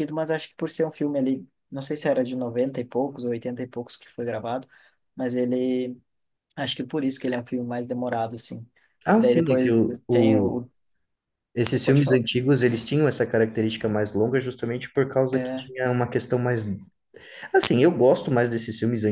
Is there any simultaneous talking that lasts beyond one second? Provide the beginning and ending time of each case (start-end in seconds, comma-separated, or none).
9.2-10.6